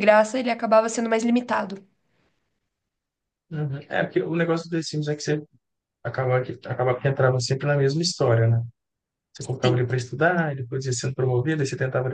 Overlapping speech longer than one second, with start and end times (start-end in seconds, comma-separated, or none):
none